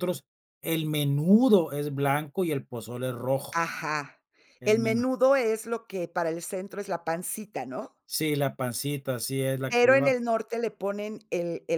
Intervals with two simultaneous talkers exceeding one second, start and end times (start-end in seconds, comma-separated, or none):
none